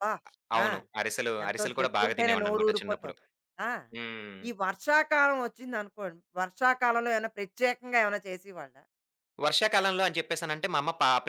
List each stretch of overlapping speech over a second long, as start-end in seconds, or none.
1.4-3.1